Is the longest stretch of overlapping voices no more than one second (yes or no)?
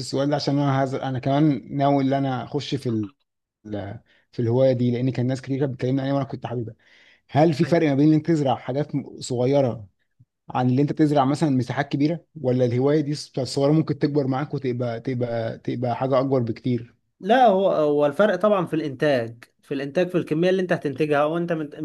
yes